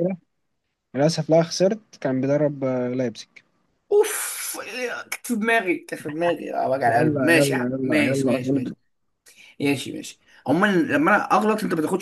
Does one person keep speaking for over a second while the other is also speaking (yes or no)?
yes